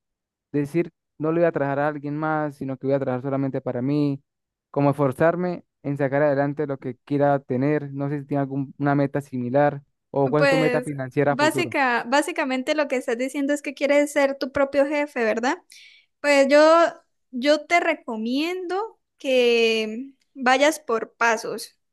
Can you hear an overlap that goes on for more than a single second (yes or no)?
yes